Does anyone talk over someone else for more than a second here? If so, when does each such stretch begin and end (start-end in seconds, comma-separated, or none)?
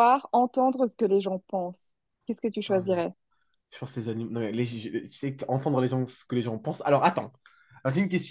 none